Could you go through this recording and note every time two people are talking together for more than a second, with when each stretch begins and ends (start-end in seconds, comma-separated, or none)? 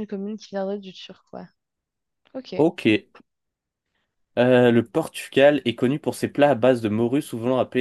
none